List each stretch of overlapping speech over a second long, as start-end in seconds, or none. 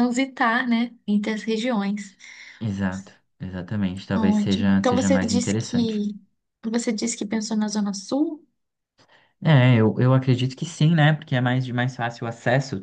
4.1-6.0